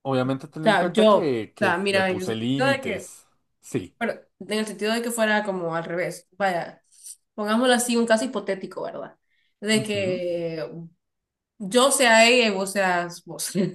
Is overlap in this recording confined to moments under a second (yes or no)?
no